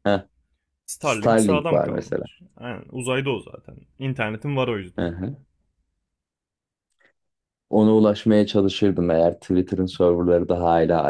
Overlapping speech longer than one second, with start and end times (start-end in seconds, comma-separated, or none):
1.0-2.2